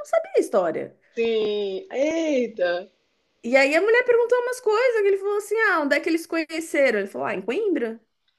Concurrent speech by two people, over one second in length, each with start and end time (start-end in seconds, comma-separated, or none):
none